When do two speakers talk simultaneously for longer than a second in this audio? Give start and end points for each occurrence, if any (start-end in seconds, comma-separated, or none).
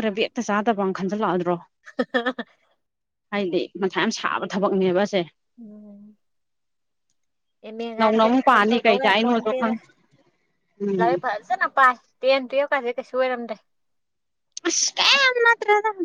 8.0-9.7